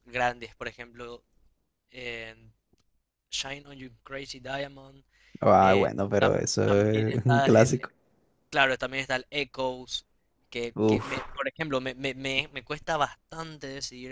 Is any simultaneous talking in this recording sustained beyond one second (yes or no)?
yes